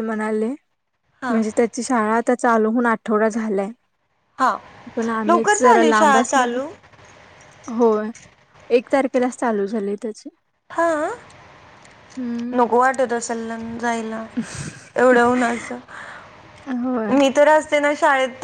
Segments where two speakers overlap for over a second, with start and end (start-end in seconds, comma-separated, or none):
5.3-6.6